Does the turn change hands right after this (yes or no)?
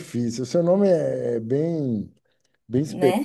no